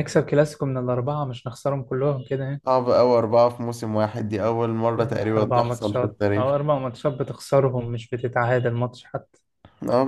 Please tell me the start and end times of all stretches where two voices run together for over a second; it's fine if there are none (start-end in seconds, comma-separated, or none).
5.0-6.5